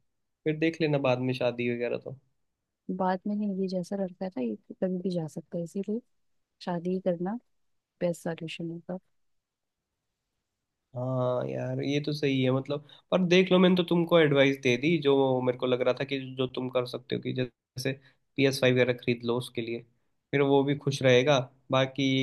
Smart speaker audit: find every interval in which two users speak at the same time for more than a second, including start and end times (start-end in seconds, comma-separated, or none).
none